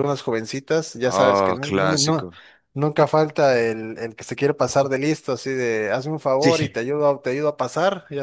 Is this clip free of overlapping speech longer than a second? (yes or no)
no